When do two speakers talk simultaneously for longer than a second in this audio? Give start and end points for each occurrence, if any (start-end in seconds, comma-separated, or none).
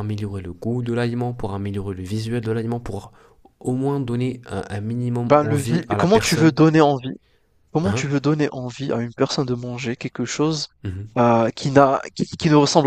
5.3-6.6